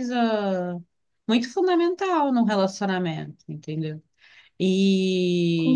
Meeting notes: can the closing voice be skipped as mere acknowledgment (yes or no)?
yes